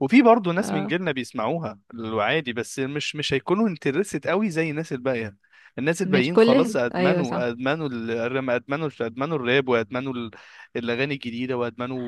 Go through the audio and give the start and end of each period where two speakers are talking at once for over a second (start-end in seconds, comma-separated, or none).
6.0-7.5